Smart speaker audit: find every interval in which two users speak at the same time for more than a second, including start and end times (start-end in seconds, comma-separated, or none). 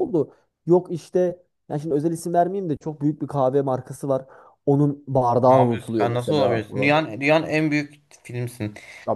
5.5-7.0